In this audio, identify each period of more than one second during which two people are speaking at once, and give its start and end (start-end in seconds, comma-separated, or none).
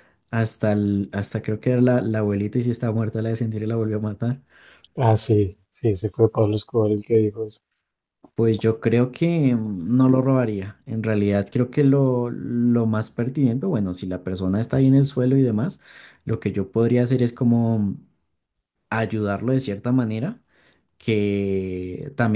none